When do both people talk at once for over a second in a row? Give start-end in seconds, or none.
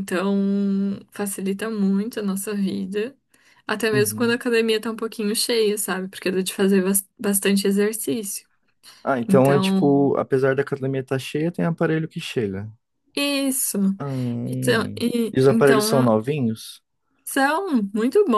14.5-16.2